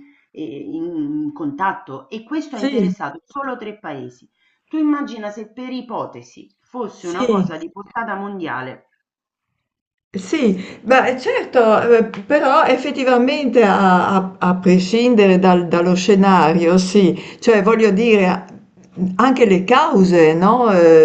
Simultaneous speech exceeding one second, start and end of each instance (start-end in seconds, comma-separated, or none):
none